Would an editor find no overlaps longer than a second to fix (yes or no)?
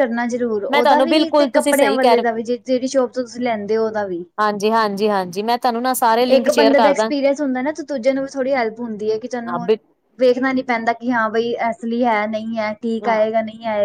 no